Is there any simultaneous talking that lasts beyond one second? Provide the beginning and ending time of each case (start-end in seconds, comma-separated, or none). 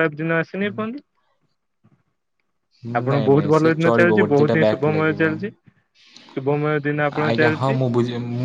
3.1-5.2